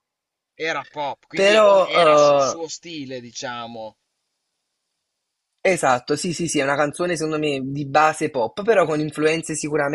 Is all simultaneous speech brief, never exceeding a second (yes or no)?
no